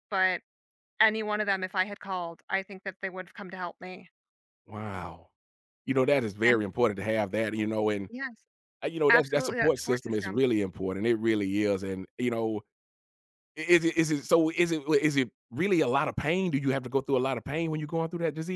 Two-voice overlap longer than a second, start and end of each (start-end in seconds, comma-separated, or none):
9.1-10.4